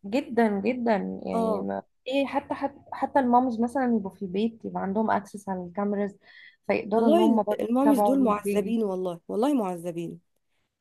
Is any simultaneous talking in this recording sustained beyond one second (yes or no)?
yes